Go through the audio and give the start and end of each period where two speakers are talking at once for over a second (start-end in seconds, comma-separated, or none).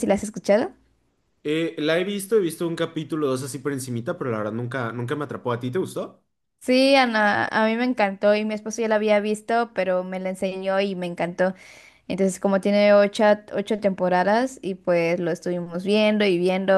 none